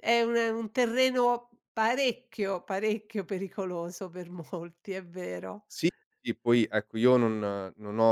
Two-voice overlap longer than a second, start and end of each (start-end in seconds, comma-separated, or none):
none